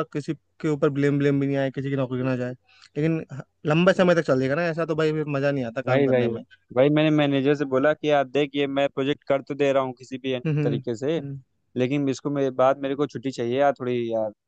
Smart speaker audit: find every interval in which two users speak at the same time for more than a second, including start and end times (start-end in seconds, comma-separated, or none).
none